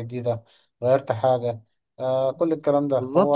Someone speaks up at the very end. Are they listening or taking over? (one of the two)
taking over